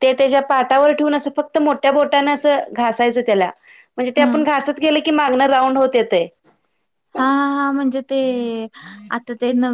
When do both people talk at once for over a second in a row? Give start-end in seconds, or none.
none